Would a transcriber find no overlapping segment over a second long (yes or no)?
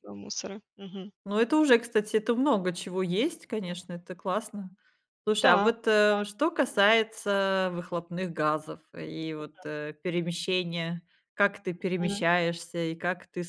yes